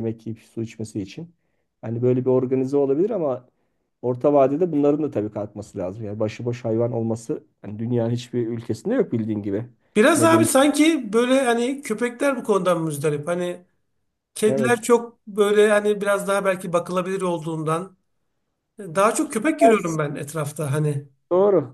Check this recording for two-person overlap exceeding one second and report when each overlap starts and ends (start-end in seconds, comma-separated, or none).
none